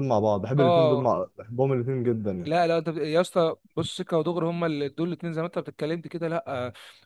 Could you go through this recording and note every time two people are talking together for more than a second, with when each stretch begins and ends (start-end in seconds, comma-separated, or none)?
none